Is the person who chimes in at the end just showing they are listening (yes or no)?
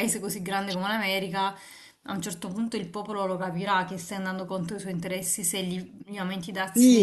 no